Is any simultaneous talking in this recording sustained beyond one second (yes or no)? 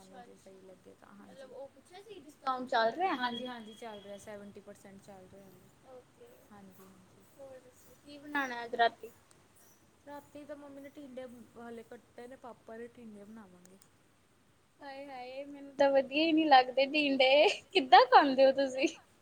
no